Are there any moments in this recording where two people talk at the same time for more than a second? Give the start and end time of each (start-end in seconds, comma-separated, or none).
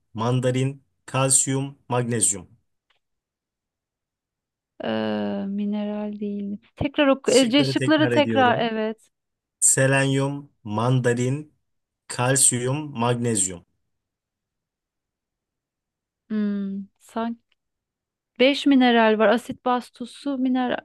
7.2-8.7